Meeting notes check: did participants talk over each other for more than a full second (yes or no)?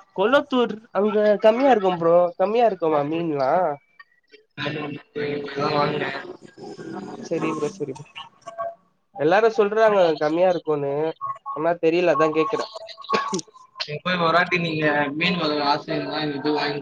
no